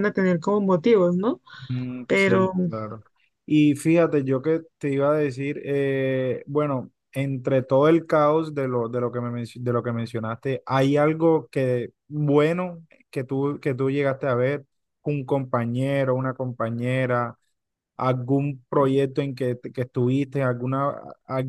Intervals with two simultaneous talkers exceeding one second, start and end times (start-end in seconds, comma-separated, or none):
none